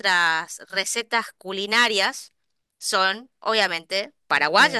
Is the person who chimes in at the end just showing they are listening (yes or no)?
no